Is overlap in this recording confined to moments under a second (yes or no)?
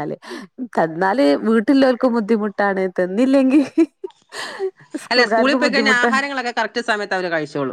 yes